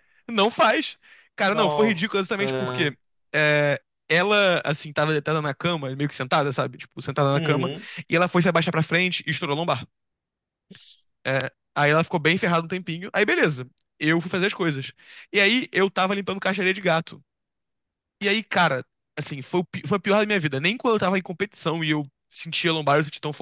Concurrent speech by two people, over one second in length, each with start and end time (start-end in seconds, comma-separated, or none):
1.5-2.9